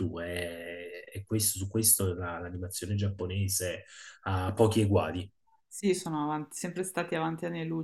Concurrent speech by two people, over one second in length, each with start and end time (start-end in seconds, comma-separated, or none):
none